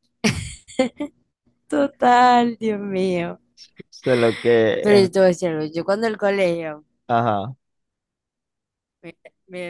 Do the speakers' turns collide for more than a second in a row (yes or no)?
no